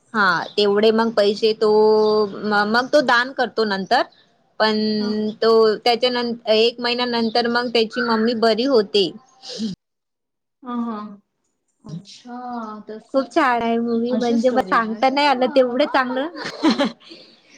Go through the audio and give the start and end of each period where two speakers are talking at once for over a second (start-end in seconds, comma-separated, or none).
14.2-15.9